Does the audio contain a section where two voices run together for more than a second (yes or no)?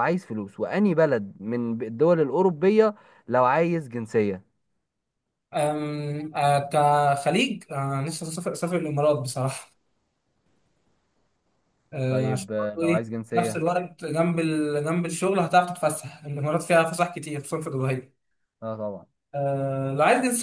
yes